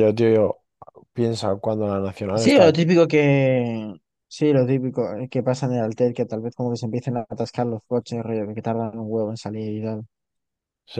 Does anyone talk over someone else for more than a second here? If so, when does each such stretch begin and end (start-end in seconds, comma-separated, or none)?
none